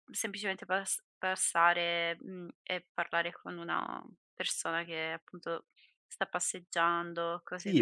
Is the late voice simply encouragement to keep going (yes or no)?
no